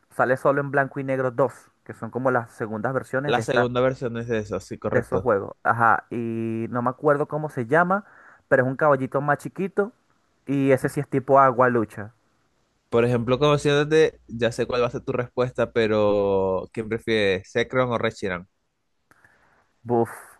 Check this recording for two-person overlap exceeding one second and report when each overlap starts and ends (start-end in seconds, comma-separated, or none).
none